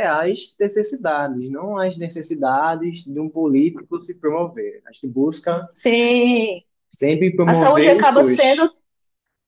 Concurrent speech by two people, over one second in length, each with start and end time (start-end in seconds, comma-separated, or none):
7.4-8.7